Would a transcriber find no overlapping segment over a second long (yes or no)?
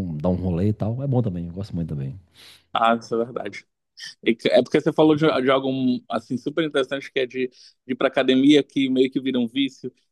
yes